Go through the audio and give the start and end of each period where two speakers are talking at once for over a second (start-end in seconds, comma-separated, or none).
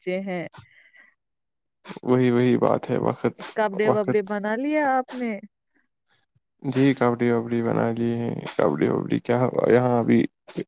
none